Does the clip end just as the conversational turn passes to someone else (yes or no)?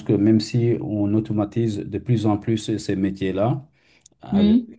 no